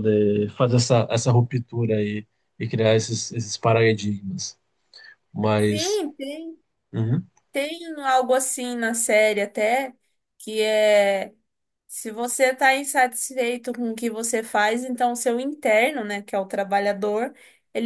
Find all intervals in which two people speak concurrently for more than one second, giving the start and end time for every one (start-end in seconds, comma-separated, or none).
none